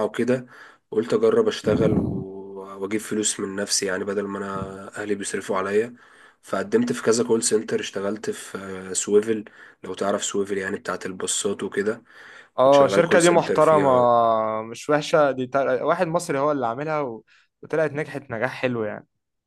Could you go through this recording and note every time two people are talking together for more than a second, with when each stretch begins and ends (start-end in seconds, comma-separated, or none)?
12.6-13.9